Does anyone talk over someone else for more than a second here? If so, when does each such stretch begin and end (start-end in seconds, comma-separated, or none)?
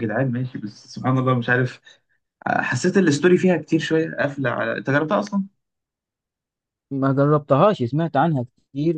none